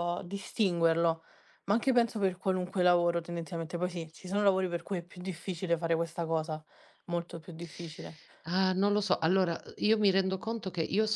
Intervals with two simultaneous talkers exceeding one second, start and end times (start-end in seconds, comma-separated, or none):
none